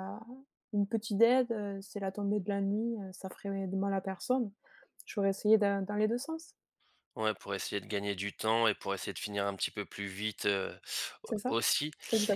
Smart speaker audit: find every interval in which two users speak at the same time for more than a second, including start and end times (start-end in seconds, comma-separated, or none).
none